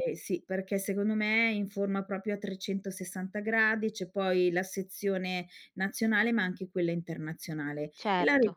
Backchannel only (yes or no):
yes